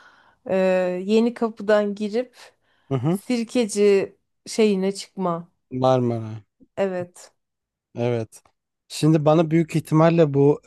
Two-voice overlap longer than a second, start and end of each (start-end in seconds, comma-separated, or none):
none